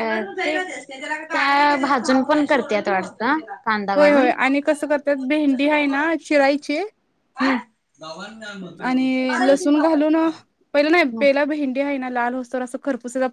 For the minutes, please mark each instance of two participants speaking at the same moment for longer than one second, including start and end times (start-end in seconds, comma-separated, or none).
none